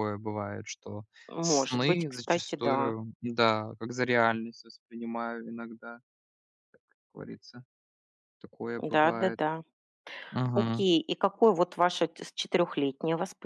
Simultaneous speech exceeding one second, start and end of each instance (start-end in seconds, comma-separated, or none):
1.4-2.9